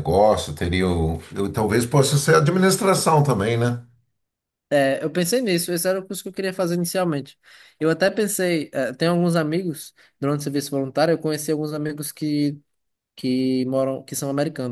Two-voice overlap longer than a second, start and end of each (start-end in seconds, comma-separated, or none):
none